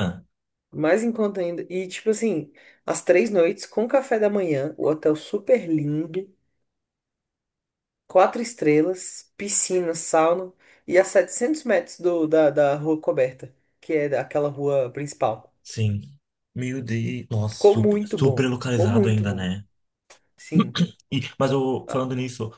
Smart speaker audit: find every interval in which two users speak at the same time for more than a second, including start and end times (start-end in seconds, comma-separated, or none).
17.5-19.5